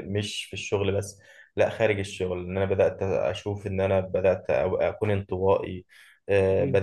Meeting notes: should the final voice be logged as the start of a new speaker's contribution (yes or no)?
no